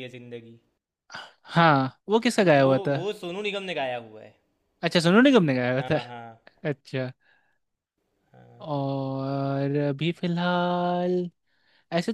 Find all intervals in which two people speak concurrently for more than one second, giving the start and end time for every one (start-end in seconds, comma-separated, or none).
none